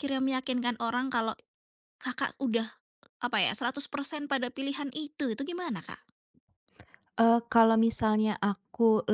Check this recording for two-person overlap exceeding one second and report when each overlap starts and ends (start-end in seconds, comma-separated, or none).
none